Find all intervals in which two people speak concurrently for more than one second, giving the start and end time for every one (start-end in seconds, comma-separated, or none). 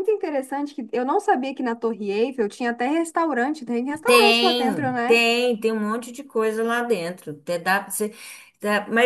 4.0-5.2